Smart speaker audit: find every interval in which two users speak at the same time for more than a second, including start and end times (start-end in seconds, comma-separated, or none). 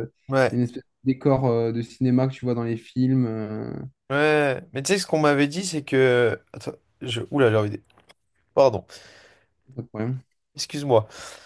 none